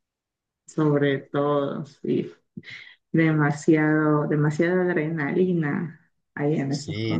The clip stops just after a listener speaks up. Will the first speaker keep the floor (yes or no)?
no